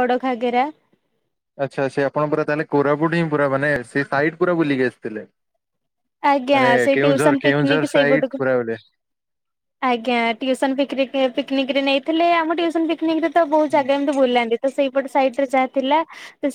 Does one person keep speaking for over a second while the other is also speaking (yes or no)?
yes